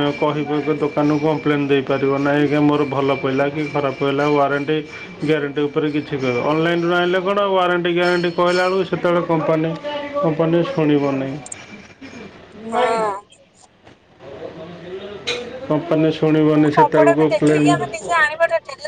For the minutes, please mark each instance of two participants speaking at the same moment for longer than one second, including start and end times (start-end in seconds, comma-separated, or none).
16.4-17.8